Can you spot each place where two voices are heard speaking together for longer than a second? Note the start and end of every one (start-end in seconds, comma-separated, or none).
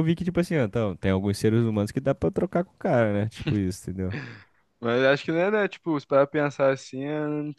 none